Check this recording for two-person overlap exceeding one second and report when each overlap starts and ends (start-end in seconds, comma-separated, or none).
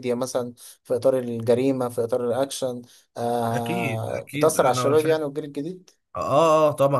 3.5-5.3